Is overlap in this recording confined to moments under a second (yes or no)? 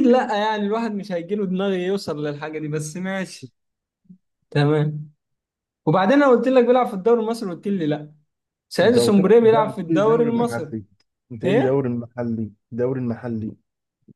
no